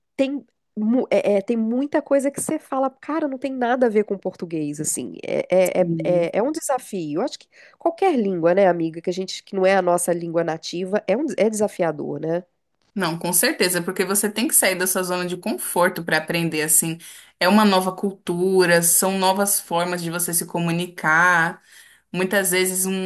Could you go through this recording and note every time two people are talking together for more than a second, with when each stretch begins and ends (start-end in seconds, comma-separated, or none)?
none